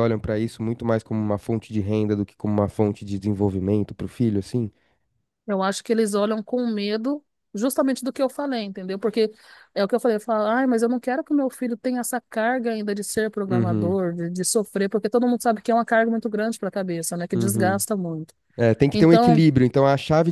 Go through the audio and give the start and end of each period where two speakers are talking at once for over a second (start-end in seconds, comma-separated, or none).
none